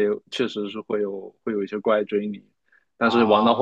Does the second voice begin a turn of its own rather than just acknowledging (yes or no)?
no